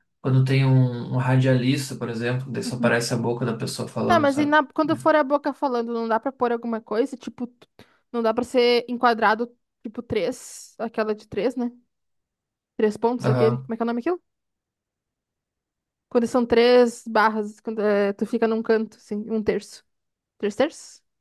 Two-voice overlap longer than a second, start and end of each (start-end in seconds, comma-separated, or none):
none